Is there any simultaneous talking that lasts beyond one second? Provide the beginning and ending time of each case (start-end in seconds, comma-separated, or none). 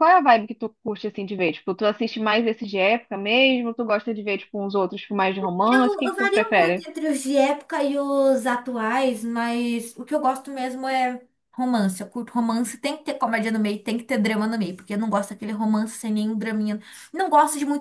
5.6-6.9